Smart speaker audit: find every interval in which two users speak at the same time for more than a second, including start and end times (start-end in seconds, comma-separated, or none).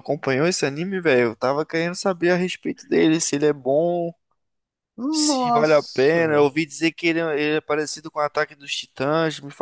5.1-6.5